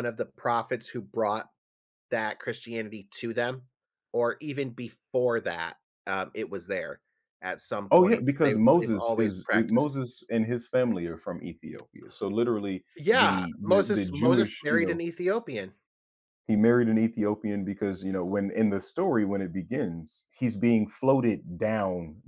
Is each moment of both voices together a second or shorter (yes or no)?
no